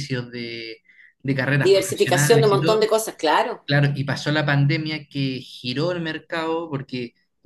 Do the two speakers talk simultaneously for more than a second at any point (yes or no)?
yes